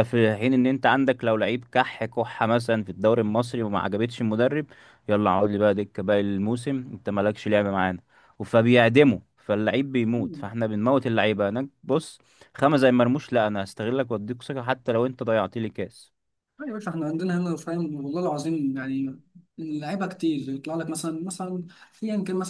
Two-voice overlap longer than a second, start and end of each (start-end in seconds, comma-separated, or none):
none